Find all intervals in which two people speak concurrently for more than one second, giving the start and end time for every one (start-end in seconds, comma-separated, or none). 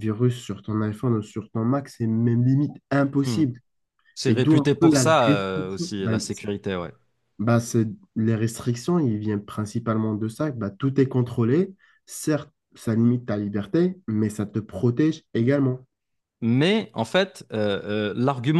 4.2-6.4